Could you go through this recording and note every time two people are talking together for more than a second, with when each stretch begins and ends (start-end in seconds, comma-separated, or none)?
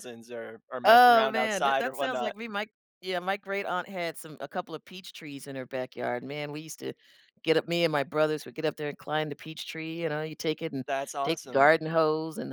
0.8-2.4